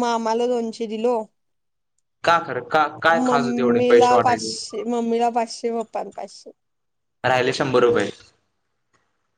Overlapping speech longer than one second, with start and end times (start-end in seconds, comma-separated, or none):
3.3-4.5